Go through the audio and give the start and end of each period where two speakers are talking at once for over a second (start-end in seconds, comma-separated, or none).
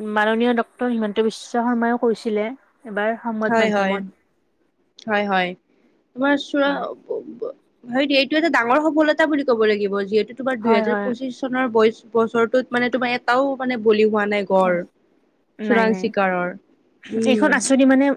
none